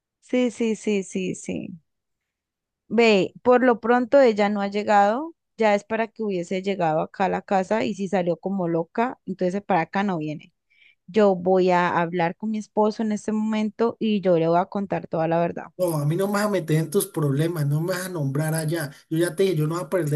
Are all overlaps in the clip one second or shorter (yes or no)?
yes